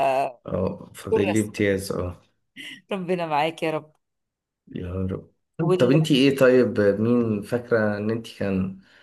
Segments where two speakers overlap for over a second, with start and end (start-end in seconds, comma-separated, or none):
none